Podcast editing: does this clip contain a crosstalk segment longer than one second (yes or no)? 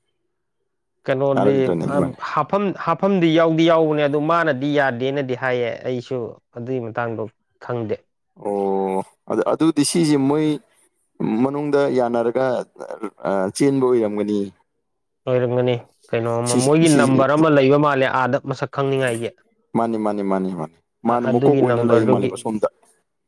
yes